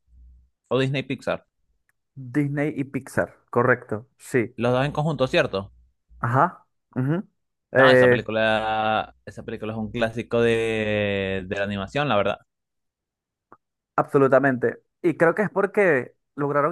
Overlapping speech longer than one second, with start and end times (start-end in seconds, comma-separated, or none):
none